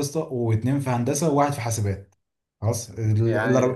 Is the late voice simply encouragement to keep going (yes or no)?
yes